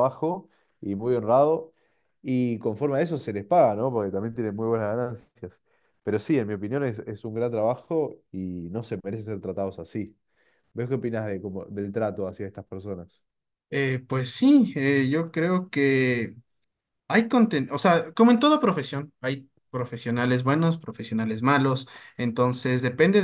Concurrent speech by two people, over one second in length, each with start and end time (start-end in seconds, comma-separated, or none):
none